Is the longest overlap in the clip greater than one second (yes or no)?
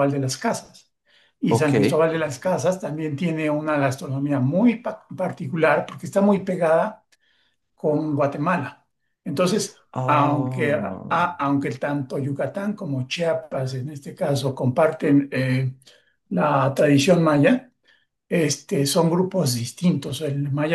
yes